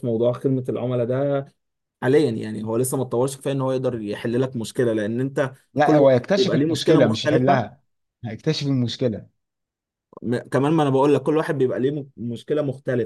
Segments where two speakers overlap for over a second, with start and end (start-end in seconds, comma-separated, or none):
5.7-7.7